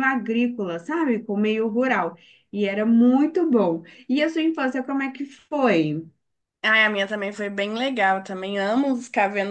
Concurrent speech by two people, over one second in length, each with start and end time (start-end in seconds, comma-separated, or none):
none